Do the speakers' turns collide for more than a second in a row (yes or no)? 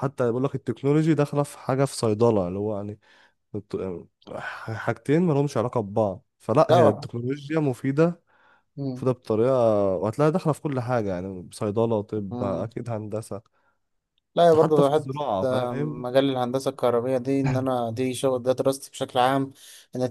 yes